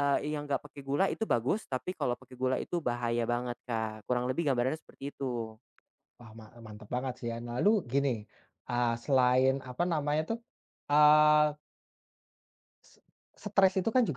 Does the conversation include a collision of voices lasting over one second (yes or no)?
no